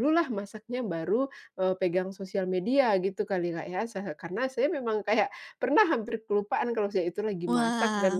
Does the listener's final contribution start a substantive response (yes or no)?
no